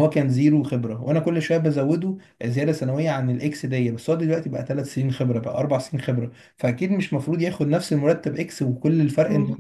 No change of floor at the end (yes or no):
no